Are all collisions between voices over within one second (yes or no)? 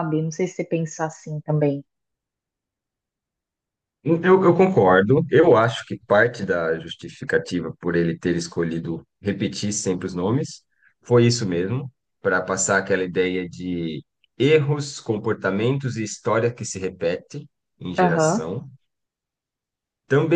yes